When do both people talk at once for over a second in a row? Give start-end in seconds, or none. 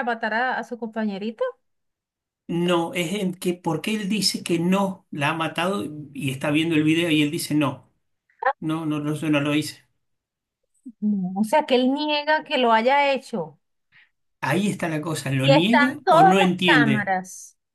15.4-17.1